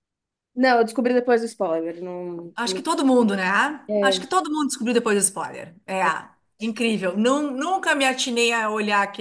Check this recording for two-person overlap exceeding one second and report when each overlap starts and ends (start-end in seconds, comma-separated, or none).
none